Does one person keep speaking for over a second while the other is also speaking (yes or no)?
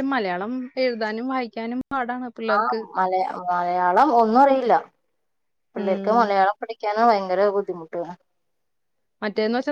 no